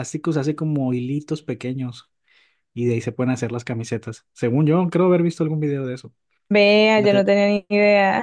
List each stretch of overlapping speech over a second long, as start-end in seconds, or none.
none